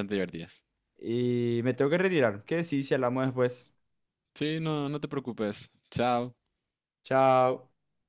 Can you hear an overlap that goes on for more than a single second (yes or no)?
no